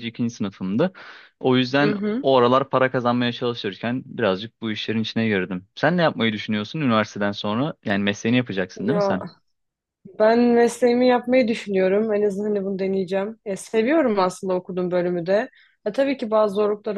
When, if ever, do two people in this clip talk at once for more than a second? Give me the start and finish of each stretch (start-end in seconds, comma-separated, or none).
none